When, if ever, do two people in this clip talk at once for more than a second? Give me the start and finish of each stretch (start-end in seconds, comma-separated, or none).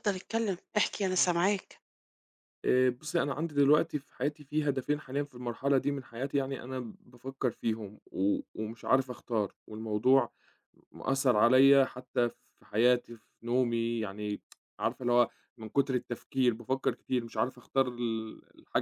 none